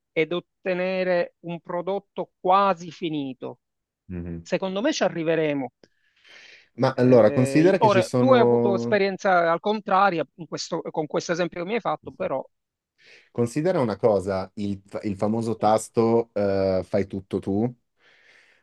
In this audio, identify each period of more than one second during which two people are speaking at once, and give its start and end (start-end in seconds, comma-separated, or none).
7.0-9.0